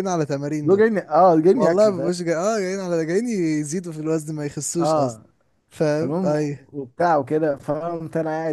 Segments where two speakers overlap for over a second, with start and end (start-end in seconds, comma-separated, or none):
none